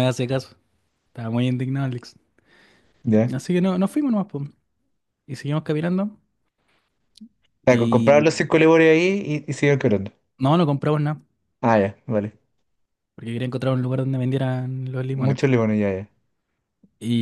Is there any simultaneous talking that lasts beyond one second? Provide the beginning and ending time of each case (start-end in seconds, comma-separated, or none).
none